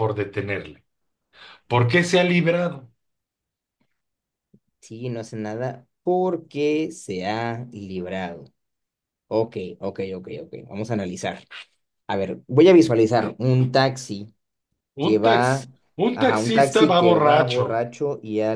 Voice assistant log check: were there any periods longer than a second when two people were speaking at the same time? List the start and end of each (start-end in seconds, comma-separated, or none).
16.1-17.7